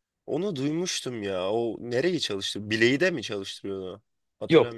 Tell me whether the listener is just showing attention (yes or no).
no